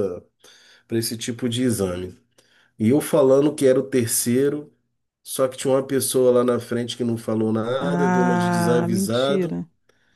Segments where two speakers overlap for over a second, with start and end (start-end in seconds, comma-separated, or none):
7.8-9.6